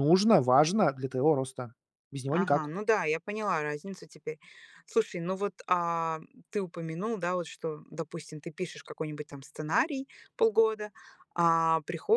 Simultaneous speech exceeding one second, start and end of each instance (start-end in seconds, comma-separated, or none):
none